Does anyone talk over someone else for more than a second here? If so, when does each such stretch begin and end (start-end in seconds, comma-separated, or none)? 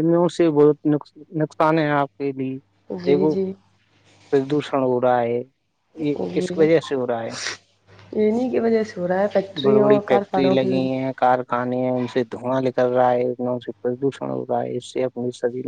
9.6-11.1